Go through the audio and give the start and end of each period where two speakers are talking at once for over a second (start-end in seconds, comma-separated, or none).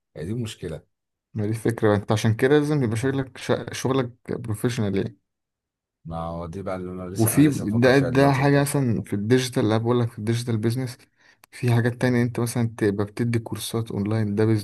7.2-8.7